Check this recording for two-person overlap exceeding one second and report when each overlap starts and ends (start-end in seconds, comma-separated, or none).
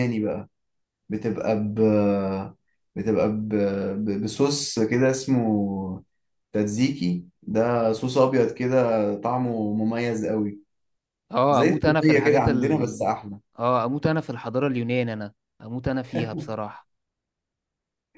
11.5-13.1